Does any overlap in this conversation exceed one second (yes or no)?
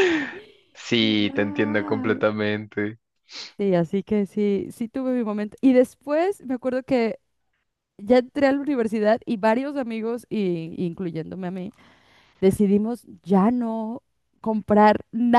yes